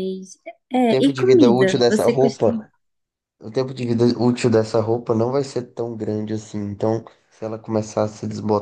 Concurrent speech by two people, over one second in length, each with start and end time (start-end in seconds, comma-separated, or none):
0.9-2.7